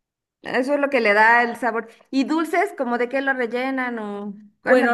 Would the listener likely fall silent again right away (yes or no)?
no